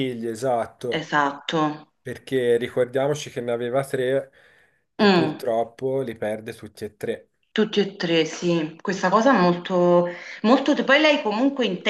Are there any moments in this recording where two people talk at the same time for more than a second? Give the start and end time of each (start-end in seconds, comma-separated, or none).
none